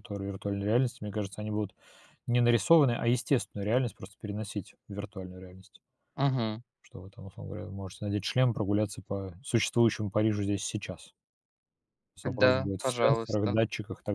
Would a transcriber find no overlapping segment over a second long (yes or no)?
no